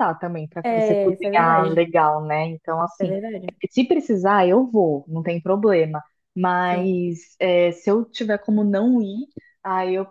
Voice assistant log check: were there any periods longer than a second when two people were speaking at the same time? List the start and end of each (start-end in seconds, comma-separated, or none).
0.6-1.9